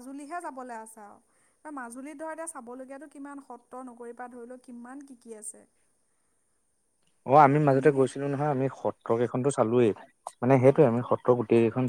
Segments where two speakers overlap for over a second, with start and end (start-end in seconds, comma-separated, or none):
none